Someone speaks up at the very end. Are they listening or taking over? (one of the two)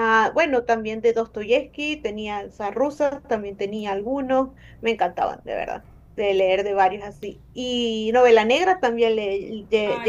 taking over